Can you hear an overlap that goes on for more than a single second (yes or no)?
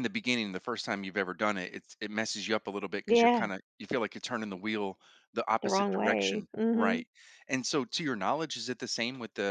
yes